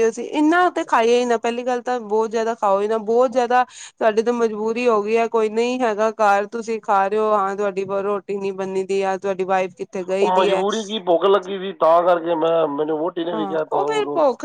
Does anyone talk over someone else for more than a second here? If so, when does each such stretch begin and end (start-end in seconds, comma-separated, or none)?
none